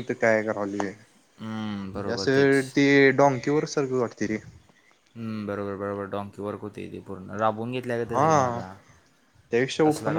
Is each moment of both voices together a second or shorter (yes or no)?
no